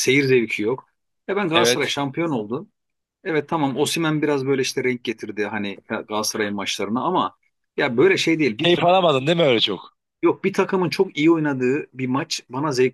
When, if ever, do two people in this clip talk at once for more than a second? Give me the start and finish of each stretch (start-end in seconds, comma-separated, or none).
none